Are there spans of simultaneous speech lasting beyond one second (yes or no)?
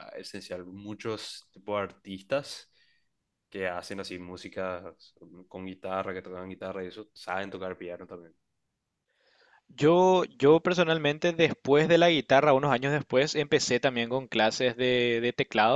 no